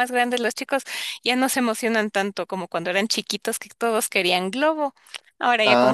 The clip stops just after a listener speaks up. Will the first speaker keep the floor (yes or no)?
no